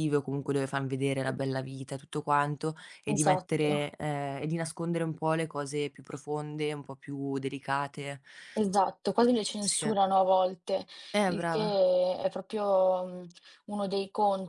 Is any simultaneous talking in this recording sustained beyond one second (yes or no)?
no